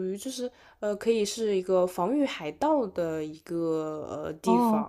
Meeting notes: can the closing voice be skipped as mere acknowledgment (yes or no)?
yes